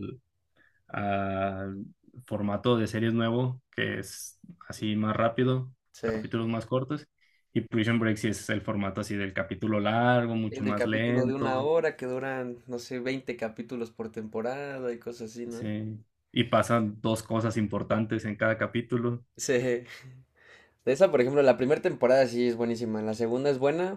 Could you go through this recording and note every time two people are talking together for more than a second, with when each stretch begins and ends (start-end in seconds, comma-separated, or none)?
10.5-11.7